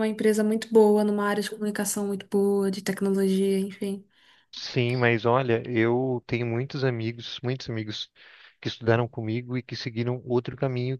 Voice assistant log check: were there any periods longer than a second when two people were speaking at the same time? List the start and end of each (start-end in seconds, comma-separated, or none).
none